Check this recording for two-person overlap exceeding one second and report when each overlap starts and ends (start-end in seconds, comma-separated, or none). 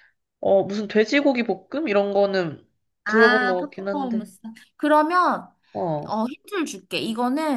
3.1-4.3